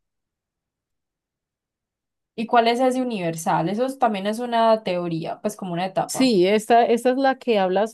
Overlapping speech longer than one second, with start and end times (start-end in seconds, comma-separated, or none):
none